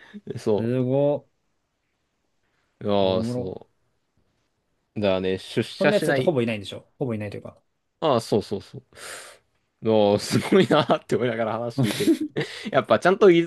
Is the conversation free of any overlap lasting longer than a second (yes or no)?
yes